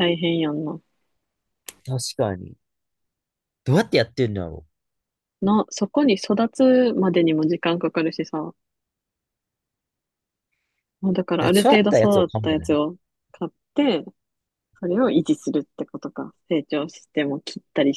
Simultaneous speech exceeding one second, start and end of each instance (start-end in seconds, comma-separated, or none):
11.4-12.8